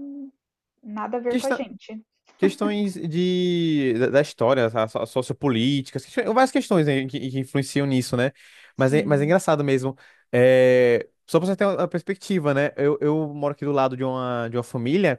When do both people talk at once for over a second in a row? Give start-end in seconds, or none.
none